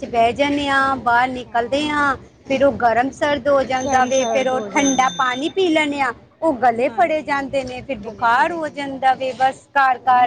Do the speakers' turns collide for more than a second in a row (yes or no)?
yes